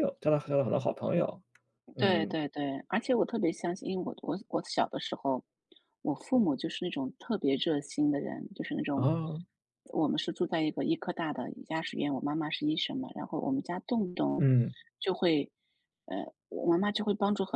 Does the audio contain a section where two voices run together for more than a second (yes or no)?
no